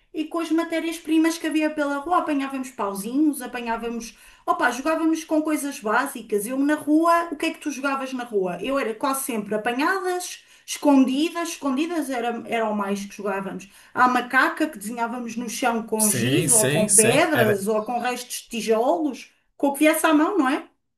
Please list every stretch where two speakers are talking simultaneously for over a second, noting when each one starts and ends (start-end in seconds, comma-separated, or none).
16.0-17.6